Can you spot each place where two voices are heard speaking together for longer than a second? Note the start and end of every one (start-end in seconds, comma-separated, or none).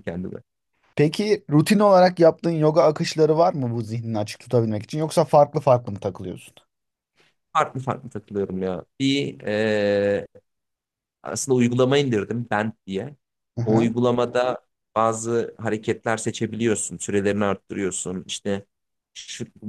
none